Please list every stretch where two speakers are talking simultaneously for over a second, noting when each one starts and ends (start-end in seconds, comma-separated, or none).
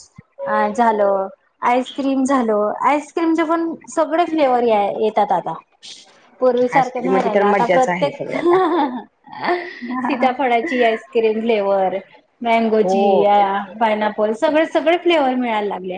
6.8-8.3